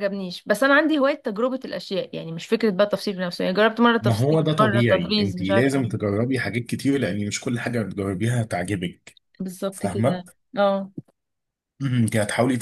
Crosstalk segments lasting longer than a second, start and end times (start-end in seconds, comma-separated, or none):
4.0-6.0